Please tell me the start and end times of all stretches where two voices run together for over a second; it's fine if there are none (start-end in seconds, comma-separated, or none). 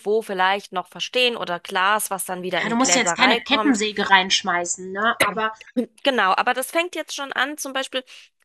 2.5-3.8